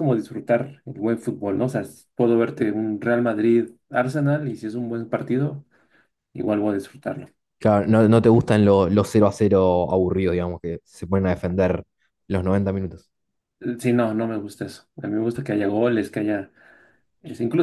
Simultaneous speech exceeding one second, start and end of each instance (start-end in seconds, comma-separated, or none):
none